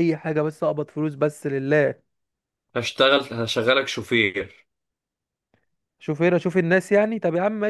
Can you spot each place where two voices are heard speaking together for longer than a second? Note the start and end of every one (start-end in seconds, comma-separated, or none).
none